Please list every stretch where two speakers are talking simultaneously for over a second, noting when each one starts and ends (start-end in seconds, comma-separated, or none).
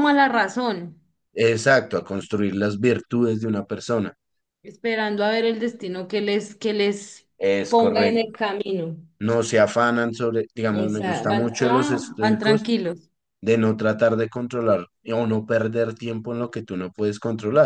10.7-12.7